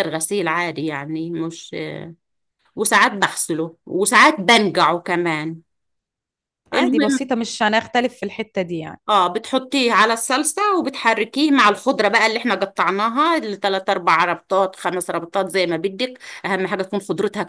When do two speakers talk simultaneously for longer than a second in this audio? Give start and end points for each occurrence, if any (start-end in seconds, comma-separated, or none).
none